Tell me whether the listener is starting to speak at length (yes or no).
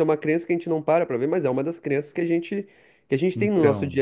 no